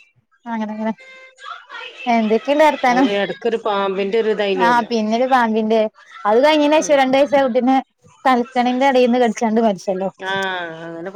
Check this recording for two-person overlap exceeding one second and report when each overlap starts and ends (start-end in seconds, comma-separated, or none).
none